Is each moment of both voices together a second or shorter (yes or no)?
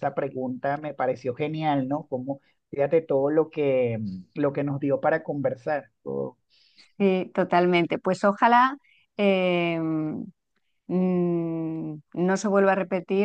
yes